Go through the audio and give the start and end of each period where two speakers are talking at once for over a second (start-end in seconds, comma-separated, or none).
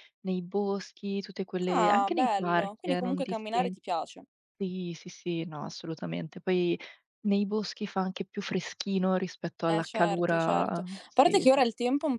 1.7-3.7, 9.6-11.6